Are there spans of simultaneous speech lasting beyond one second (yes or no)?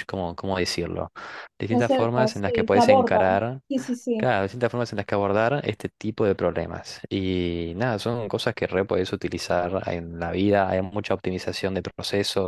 yes